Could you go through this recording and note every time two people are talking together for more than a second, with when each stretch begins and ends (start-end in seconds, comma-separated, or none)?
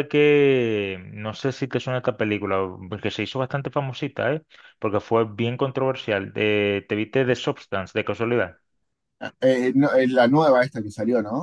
none